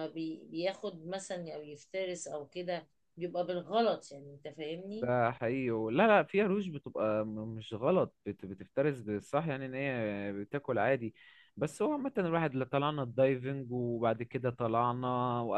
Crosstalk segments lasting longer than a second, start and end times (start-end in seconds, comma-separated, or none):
none